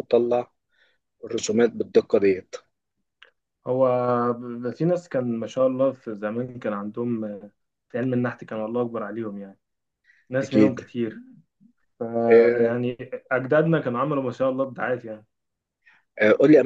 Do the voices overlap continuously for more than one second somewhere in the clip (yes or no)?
no